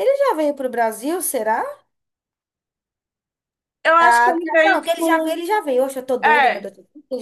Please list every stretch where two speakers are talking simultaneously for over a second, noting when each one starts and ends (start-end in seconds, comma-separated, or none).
4.0-5.5